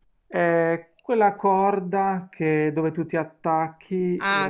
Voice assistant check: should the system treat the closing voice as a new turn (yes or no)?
yes